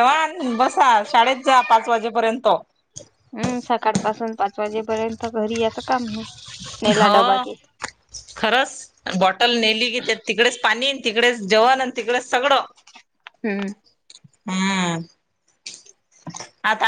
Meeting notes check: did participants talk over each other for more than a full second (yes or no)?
no